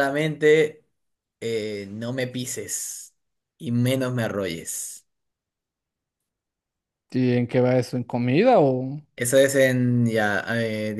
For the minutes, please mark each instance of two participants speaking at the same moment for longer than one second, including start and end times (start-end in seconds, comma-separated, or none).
none